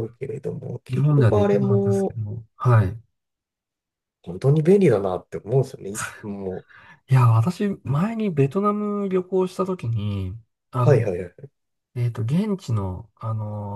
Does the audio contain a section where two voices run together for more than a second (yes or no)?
yes